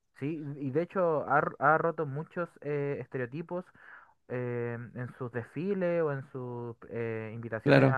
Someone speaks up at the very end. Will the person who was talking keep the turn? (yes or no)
yes